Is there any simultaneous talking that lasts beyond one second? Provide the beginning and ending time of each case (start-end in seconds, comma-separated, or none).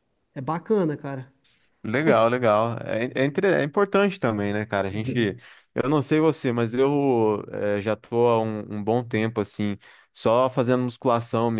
none